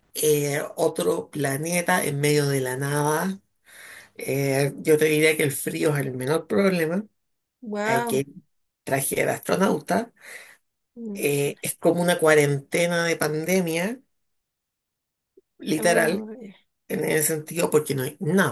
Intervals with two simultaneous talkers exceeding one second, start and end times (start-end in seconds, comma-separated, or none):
none